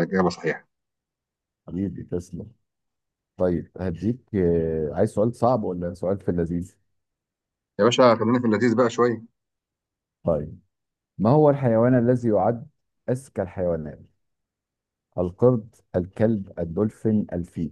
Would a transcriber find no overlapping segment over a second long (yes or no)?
yes